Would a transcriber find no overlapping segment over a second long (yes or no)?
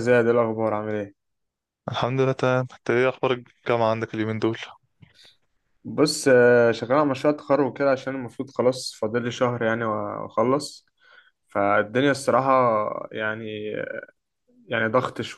yes